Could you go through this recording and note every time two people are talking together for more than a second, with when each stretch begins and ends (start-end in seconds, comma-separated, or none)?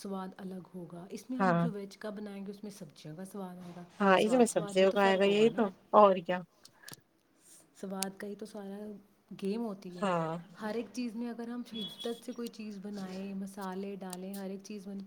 4.2-5.7